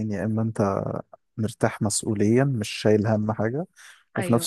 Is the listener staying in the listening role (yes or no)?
yes